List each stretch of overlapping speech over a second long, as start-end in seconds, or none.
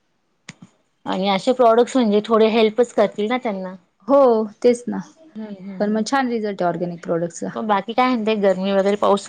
none